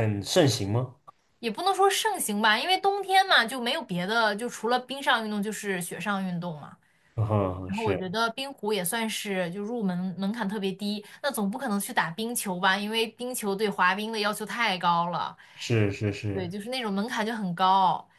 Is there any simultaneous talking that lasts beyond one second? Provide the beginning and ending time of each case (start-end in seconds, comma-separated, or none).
none